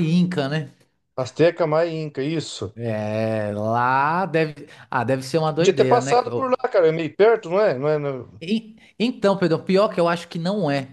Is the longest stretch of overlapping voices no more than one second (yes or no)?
yes